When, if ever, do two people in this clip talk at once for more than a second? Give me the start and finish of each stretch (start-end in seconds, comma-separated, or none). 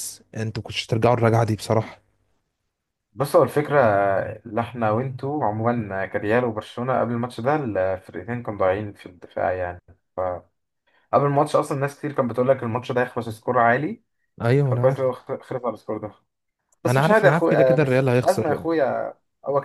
16.9-18.7